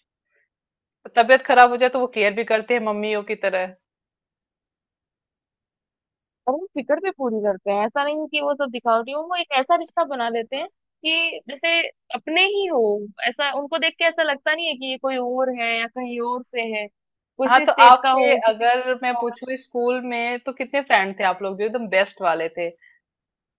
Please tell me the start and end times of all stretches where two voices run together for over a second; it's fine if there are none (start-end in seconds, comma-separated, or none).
17.5-19.3